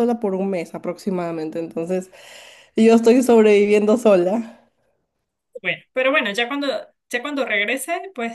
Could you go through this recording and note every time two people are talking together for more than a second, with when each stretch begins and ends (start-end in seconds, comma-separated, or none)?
none